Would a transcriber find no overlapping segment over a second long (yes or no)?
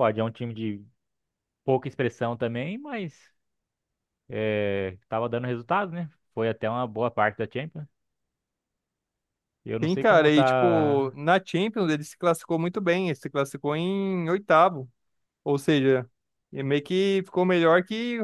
no